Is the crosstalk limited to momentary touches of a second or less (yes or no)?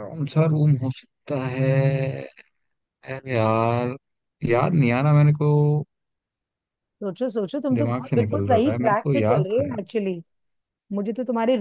no